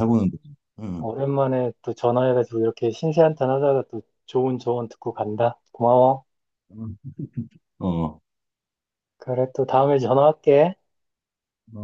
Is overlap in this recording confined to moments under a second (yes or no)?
yes